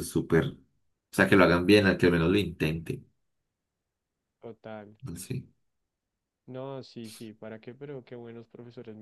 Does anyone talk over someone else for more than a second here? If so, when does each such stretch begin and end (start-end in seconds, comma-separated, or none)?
none